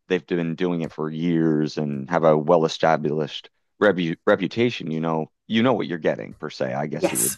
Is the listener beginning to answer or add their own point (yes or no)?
no